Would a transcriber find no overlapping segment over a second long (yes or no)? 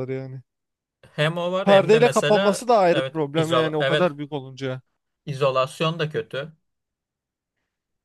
no